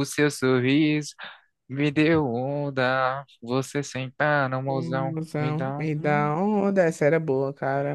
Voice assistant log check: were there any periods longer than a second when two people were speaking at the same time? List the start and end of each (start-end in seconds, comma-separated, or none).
4.7-6.3